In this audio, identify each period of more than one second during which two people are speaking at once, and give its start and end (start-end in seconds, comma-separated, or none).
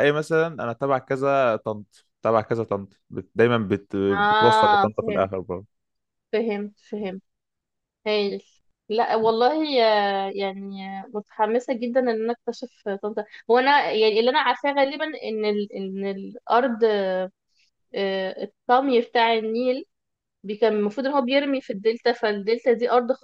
4.1-5.3